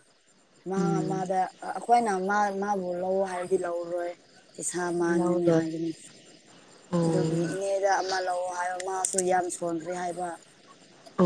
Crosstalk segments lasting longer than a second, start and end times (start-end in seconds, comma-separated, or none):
none